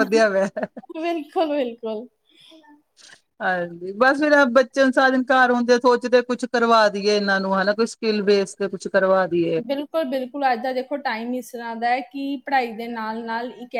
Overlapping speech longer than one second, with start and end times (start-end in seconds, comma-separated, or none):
none